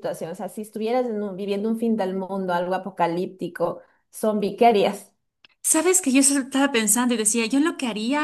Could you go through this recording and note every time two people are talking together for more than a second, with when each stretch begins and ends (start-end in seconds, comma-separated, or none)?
none